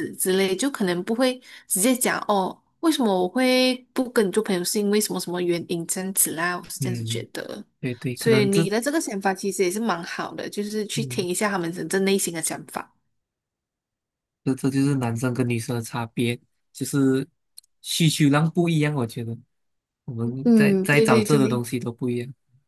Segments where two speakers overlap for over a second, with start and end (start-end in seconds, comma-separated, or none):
20.4-21.6